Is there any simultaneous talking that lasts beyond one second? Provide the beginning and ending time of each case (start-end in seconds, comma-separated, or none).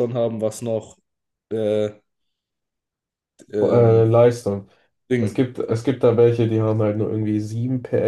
none